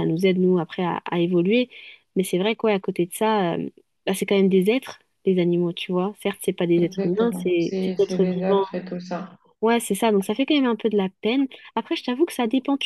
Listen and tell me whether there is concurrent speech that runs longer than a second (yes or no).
yes